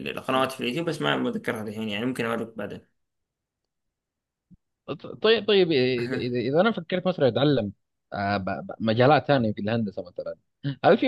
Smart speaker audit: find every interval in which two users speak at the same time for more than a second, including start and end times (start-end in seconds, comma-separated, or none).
none